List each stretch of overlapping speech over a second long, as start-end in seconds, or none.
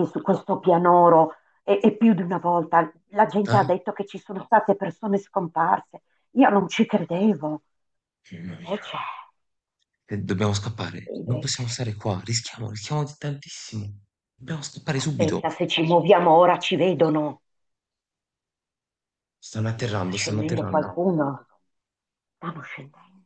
19.6-20.9